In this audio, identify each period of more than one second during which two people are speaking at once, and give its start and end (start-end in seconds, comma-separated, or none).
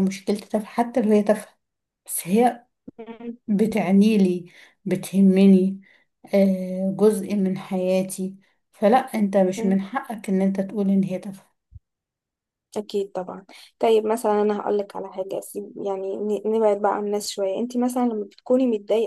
none